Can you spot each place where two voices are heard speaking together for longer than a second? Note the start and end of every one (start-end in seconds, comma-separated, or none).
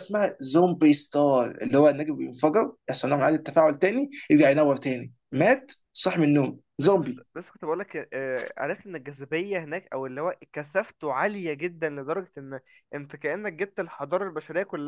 none